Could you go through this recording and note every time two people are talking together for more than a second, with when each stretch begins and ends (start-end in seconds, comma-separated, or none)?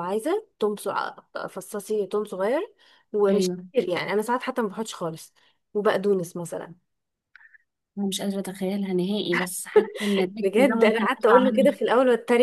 10.4-11.8